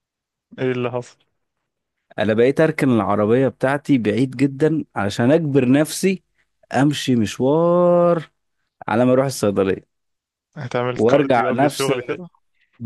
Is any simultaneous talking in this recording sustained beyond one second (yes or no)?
yes